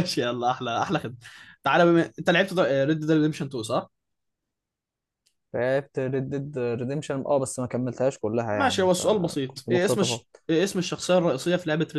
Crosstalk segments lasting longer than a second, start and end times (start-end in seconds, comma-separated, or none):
8.5-10.2